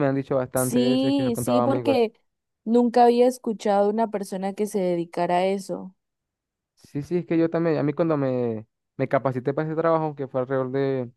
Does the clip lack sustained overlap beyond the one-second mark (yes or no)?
no